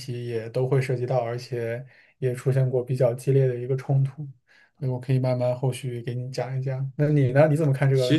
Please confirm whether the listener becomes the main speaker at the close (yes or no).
yes